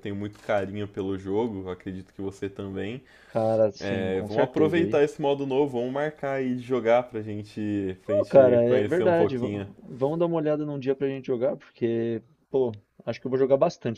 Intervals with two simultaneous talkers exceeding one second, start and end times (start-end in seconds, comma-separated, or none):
3.8-5.0, 8.1-9.7